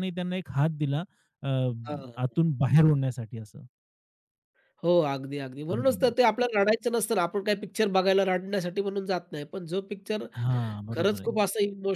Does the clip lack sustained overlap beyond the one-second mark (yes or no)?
yes